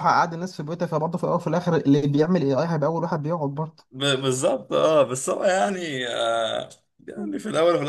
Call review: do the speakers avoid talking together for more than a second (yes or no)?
yes